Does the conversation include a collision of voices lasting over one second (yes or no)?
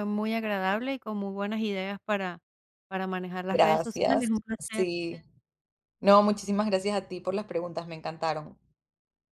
yes